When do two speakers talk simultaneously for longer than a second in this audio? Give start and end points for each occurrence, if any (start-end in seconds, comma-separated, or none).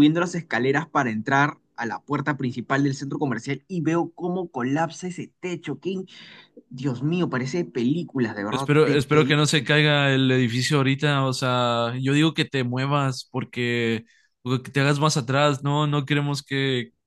8.5-9.8